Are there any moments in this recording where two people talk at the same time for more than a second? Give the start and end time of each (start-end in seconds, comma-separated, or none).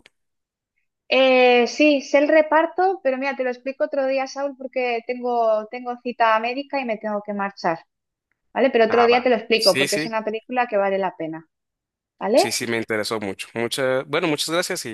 8.8-10.2